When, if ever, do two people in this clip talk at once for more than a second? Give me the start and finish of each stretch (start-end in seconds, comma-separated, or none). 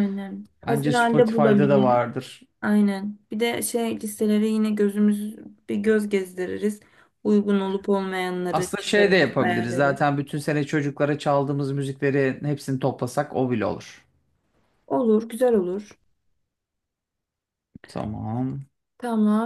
0.7-2.0, 8.5-10.0